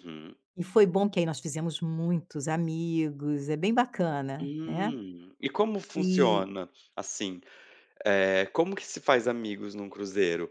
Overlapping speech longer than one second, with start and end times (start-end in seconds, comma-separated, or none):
none